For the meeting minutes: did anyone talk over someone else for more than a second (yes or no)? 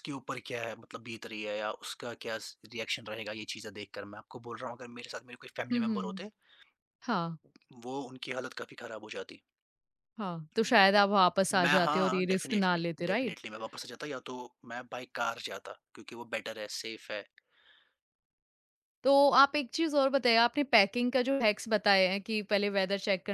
yes